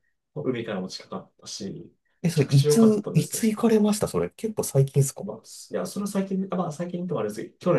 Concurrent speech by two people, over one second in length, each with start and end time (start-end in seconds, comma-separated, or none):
2.2-3.5